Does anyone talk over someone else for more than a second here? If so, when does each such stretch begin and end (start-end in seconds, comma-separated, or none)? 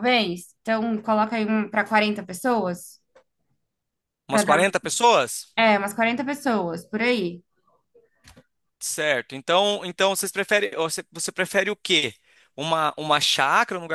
none